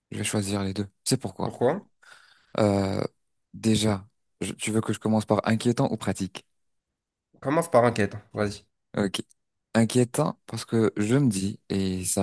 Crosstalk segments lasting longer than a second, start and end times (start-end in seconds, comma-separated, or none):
none